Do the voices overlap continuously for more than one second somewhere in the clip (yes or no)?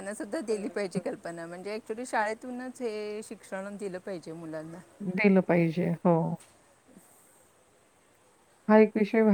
no